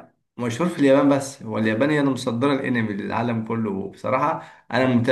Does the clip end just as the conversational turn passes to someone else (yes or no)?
no